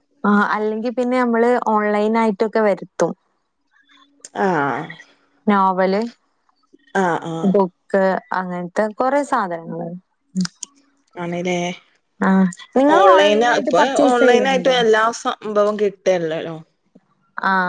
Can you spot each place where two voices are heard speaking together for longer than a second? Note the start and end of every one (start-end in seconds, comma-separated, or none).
13.0-14.7